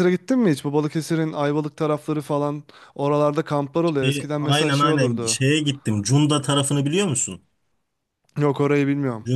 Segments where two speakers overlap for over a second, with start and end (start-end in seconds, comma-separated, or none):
4.0-5.4